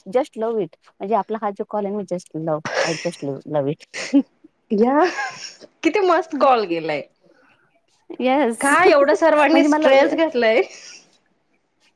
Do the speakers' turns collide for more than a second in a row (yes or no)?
yes